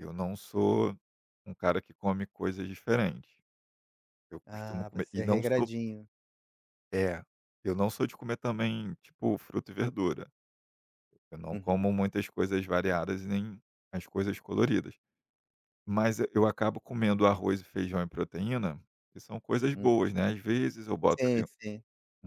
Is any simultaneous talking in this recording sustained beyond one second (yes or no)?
yes